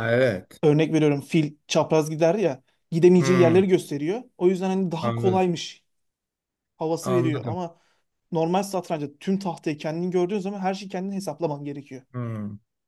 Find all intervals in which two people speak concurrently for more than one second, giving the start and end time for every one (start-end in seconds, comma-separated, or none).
none